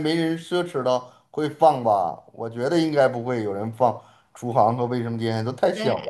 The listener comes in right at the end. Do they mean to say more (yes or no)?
yes